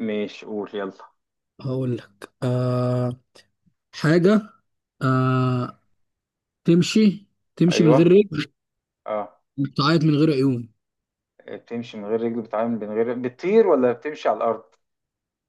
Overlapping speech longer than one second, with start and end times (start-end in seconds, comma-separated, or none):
none